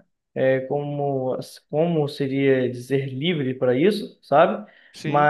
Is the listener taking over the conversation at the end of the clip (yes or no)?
no